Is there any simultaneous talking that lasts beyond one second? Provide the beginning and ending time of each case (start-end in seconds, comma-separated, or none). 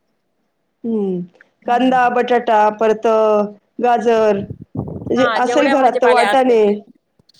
5.2-6.6